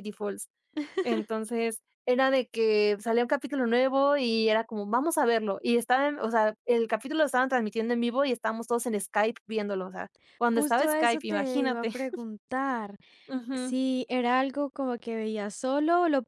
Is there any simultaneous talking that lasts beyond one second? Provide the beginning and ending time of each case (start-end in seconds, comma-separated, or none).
10.5-11.9